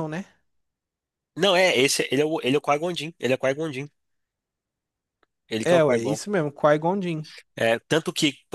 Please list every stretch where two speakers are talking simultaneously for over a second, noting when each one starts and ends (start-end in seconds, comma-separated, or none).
none